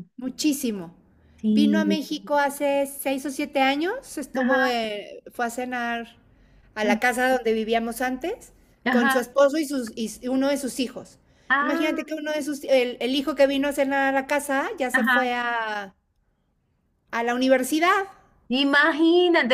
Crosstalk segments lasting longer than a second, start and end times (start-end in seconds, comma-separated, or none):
none